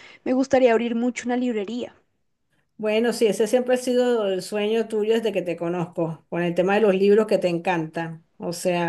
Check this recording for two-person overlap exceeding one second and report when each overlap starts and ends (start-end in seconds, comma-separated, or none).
none